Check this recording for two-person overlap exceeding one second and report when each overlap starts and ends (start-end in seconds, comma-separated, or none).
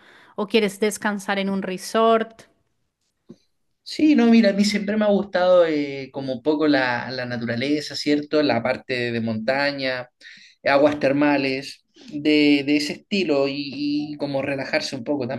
none